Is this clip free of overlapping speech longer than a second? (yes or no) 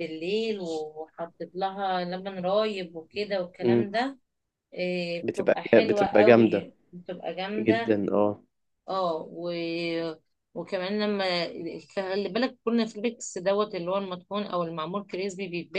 no